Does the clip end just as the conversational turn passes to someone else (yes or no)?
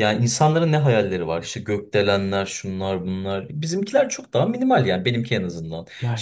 no